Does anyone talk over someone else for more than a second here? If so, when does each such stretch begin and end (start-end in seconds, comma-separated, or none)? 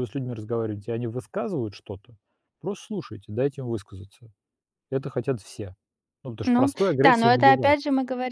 6.4-7.8